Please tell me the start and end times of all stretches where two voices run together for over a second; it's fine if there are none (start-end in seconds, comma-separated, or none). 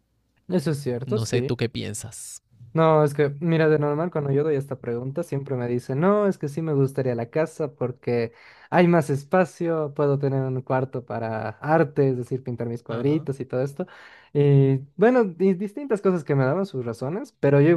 none